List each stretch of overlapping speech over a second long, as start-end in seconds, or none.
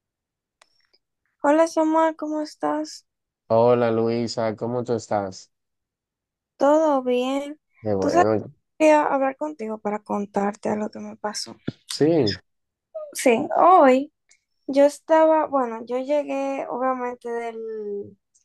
none